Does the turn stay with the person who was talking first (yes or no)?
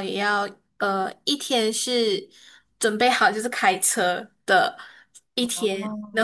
yes